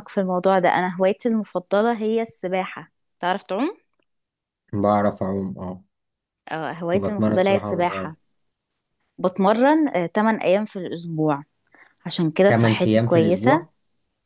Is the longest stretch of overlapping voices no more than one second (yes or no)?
no